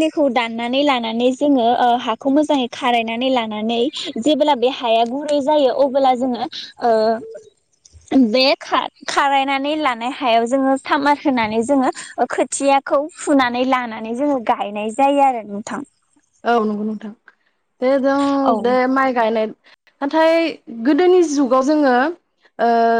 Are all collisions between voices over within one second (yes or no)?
yes